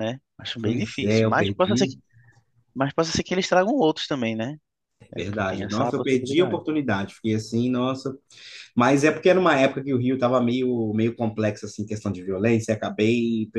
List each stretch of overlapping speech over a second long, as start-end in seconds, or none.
0.6-1.9, 5.2-6.6